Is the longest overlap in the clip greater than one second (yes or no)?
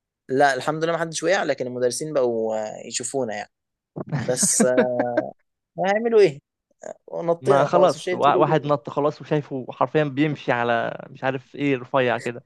yes